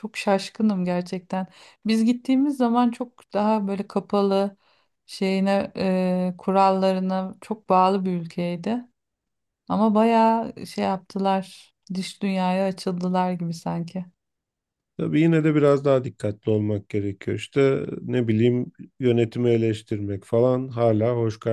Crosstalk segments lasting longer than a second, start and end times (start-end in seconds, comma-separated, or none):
none